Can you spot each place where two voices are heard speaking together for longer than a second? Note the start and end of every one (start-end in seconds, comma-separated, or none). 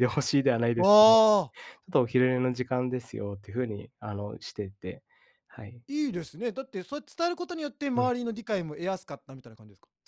none